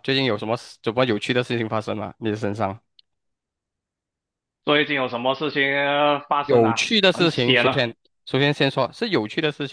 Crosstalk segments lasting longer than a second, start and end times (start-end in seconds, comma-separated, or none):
6.4-7.9